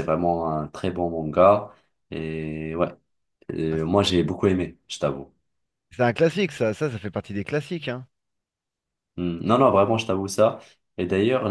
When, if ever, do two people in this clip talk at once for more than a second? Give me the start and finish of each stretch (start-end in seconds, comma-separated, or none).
none